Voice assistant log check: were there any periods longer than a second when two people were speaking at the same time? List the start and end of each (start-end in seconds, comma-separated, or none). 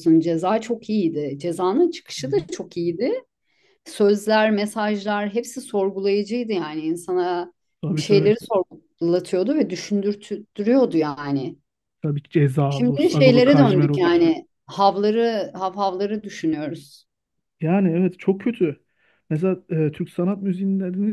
12.7-14.2